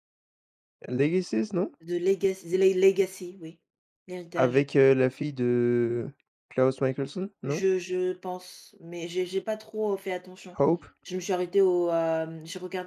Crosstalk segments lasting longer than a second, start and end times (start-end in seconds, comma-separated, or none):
none